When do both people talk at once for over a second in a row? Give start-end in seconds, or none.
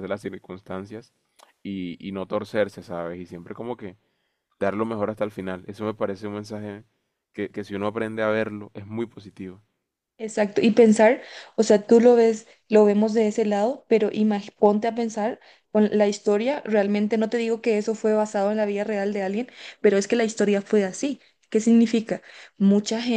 none